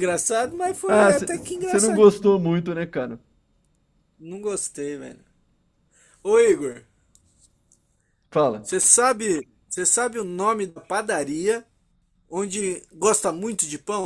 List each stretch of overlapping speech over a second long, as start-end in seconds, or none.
0.9-2.4